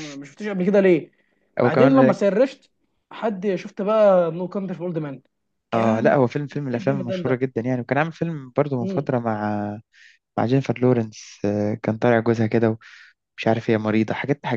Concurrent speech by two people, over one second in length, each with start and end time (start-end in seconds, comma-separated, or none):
5.7-7.4